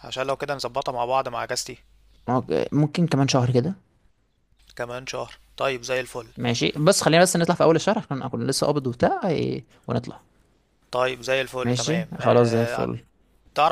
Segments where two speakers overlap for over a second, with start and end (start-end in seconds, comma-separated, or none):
11.6-12.9